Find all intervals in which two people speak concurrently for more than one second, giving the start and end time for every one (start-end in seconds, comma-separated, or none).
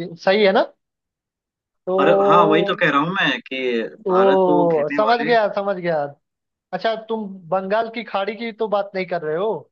4.1-5.3